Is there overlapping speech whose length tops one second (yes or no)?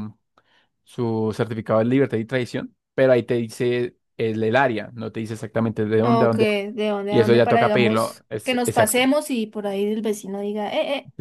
yes